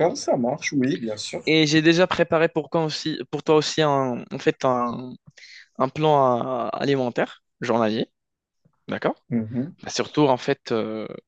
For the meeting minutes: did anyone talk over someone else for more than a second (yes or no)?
no